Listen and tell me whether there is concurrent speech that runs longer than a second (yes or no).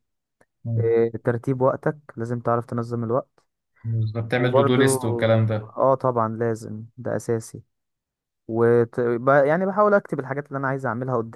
no